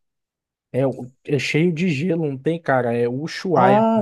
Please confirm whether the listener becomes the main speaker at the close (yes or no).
yes